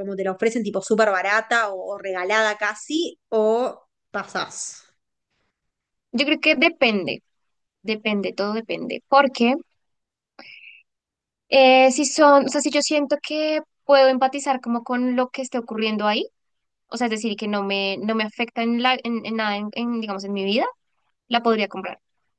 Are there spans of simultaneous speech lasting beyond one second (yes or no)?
no